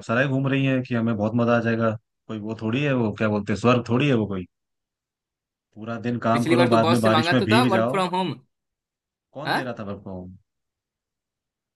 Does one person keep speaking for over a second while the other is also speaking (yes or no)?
yes